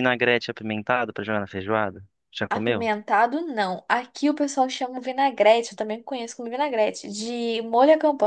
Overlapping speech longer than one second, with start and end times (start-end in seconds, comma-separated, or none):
none